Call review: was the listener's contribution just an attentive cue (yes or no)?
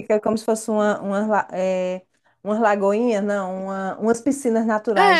no